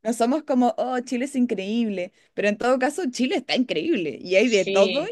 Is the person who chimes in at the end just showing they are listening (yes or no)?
yes